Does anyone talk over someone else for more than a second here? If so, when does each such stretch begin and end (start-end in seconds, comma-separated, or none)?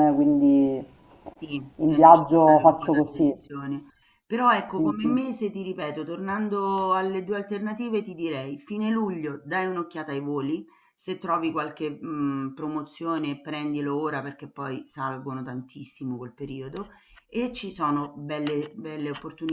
1.8-3.4